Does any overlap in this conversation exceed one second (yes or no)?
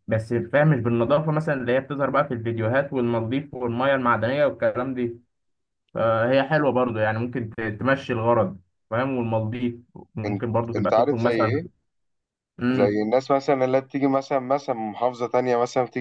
yes